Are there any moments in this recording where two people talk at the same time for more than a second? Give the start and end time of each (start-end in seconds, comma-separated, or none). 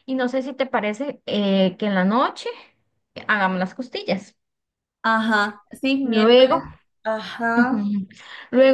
none